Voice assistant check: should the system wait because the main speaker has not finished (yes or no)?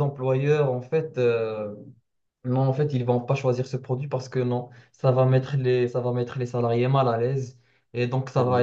yes